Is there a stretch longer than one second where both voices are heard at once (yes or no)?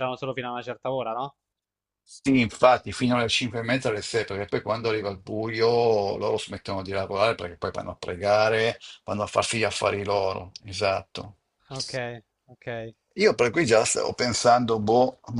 no